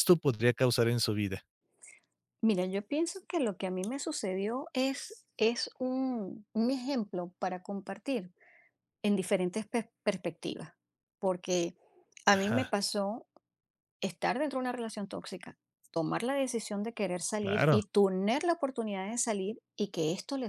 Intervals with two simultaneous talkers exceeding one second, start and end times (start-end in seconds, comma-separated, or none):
none